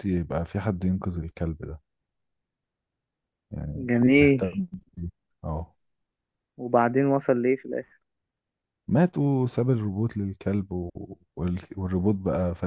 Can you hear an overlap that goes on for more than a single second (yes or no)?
no